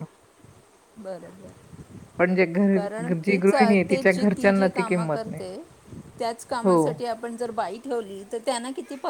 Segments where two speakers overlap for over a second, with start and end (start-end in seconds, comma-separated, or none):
2.2-5.4